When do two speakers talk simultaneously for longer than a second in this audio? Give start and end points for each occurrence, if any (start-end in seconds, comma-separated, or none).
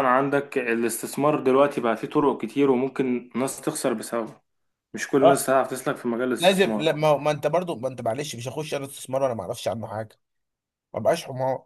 none